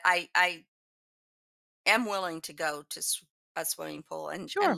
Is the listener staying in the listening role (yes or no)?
no